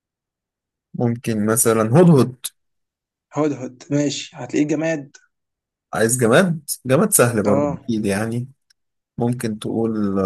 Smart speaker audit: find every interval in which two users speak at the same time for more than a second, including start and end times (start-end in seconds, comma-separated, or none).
none